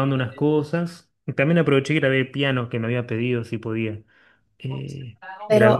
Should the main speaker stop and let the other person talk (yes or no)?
yes